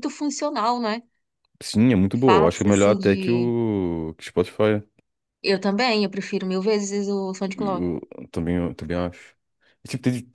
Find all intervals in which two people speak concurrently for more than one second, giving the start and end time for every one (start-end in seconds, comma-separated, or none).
2.2-3.5